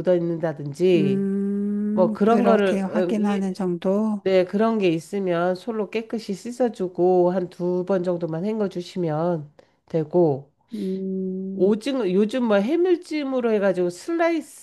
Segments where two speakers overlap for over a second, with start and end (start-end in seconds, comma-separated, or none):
1.9-3.6